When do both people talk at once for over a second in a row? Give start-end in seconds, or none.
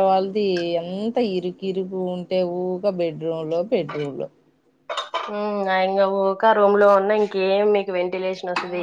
none